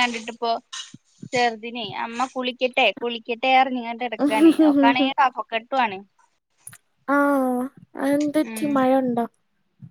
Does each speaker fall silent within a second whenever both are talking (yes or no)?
yes